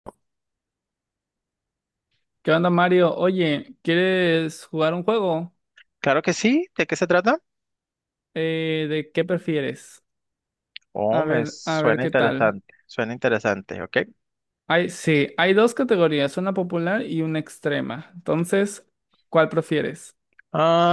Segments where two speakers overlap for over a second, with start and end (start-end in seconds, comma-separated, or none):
11.1-12.6